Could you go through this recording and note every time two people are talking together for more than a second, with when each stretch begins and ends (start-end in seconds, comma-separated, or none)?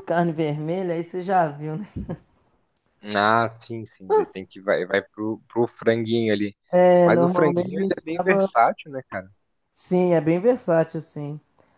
7.0-8.5